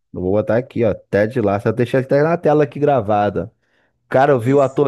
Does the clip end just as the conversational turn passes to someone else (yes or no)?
no